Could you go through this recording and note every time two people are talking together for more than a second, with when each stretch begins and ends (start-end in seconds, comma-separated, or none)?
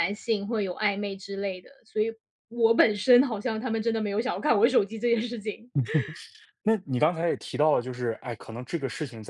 none